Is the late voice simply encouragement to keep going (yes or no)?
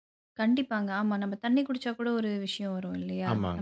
no